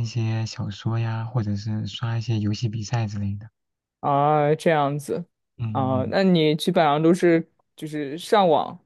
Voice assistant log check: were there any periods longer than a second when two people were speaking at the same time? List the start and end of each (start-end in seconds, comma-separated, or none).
none